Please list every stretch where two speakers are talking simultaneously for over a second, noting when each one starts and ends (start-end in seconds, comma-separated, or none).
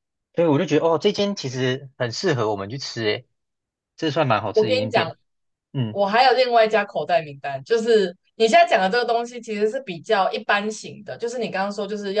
none